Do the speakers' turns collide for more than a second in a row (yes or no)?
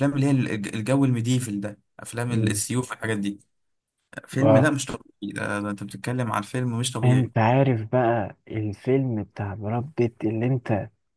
no